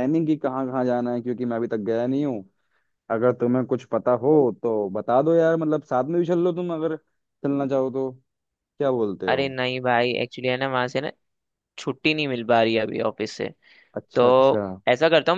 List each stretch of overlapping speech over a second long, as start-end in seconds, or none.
none